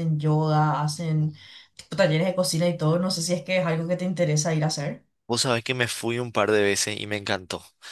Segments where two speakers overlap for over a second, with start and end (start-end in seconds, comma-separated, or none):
none